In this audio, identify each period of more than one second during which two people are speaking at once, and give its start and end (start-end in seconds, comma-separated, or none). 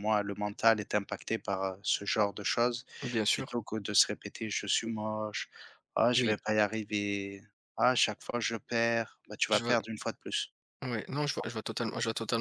none